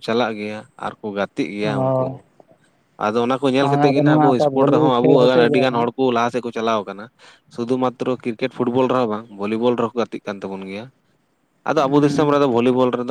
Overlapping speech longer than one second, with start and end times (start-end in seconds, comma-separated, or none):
3.9-5.8